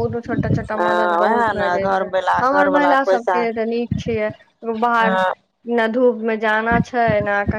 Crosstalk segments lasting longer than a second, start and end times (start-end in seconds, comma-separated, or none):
0.8-3.4